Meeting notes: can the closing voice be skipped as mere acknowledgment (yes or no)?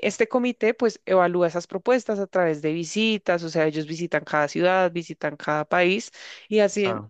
yes